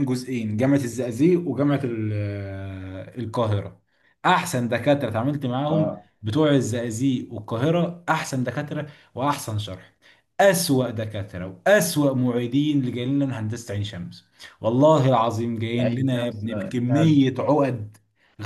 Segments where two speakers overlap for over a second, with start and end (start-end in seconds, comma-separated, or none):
15.8-17.2